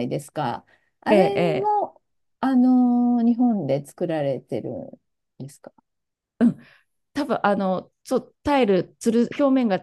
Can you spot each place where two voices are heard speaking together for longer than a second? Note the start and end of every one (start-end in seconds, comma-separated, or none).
none